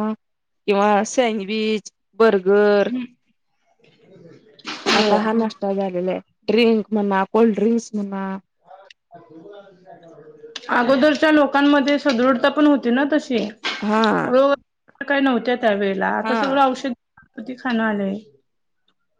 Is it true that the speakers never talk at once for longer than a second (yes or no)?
yes